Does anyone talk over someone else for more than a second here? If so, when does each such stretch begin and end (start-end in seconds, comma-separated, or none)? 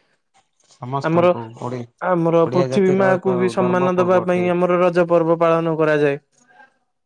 2.5-4.5